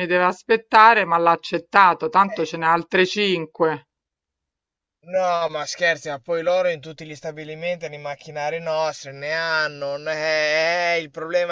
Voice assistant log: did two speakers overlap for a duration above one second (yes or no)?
no